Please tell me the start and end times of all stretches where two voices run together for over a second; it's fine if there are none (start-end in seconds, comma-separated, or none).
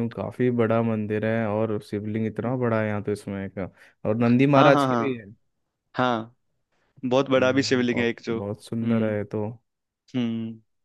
7.4-9.2